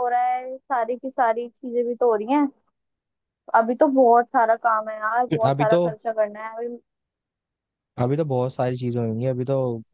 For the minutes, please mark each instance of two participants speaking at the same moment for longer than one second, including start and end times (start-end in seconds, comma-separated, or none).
none